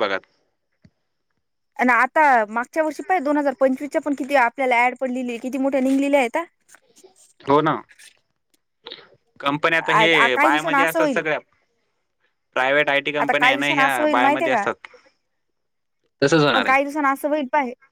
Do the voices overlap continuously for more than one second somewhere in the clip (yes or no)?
yes